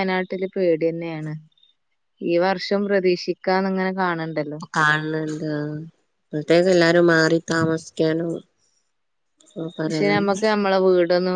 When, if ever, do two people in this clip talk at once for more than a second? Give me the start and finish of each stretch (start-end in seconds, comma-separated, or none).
none